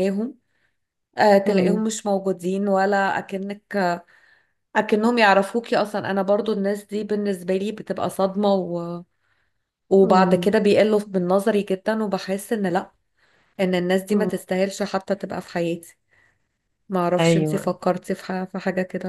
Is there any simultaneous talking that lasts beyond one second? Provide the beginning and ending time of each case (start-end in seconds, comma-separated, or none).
none